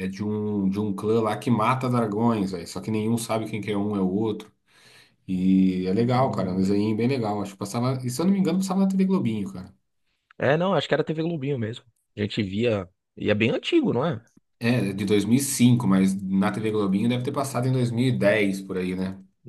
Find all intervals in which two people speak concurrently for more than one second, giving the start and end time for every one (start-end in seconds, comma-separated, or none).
none